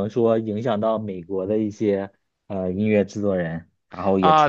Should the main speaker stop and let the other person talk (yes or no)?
yes